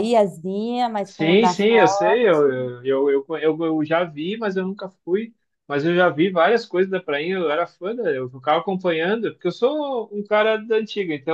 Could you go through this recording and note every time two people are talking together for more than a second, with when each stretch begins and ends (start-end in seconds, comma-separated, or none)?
1.1-2.7